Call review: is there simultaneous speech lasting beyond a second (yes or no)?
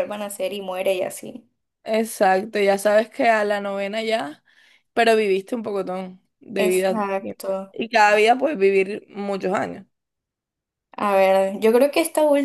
yes